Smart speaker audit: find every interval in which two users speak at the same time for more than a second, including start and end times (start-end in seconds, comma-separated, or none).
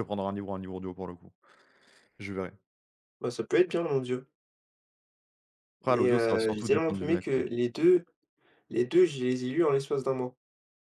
5.9-7.4